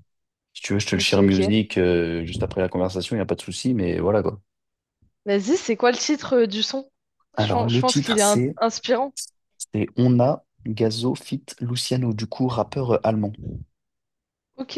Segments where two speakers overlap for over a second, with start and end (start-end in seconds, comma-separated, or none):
7.4-8.6